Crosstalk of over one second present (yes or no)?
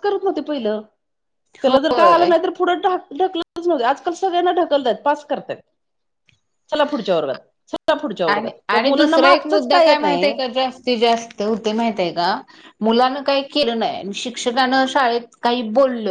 yes